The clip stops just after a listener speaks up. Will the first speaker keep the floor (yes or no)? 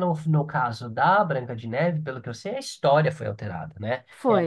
yes